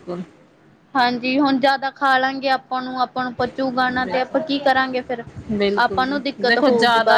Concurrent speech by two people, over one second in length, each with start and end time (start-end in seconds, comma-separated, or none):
none